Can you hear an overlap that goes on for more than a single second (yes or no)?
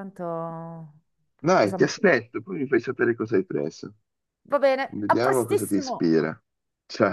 yes